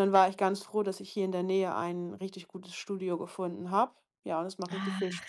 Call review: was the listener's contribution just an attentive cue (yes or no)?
no